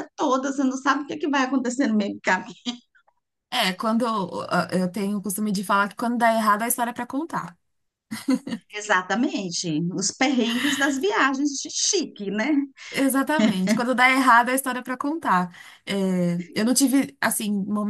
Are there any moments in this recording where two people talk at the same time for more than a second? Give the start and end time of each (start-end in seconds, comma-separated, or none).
none